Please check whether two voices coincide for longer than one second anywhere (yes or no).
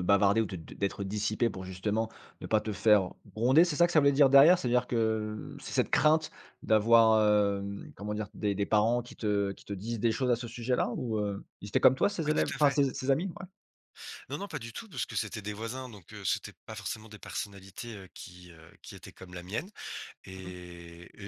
no